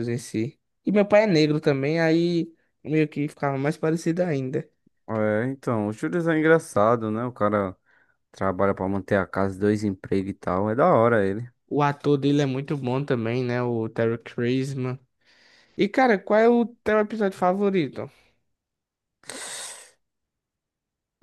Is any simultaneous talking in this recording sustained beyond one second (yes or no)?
no